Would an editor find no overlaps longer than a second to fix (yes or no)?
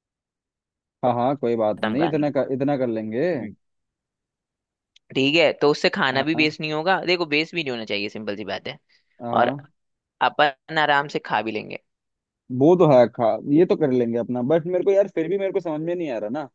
yes